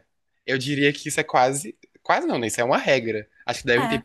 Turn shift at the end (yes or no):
no